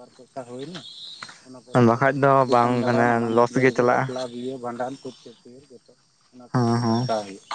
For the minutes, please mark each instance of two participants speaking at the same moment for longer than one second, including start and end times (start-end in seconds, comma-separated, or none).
1.9-4.1